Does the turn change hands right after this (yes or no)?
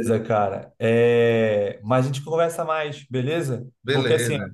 no